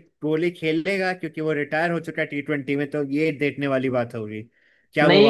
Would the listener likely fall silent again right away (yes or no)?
no